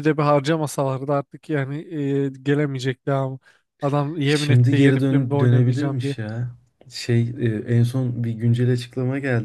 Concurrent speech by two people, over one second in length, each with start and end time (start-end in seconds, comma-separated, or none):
4.2-6.2